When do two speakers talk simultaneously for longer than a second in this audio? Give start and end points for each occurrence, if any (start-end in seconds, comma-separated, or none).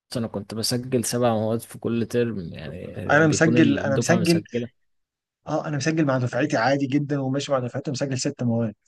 3.1-4.4